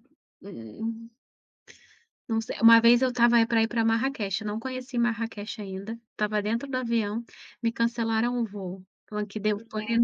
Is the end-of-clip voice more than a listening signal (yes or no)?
no